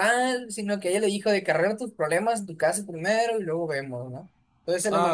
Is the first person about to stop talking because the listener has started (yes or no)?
no